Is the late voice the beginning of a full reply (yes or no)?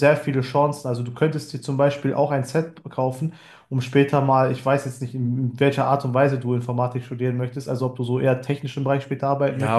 yes